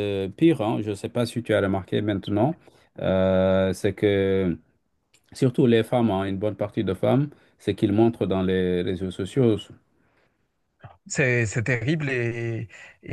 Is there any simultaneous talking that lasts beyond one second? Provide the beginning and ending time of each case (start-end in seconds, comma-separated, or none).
none